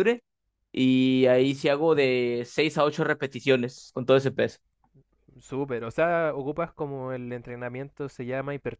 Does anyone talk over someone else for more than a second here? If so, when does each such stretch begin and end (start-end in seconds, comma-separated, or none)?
none